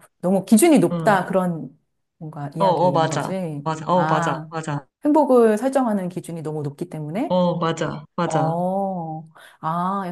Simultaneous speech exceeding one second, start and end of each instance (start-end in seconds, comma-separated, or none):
2.6-4.5